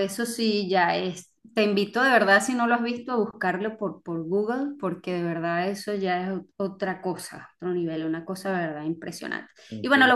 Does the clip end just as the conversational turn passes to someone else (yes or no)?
no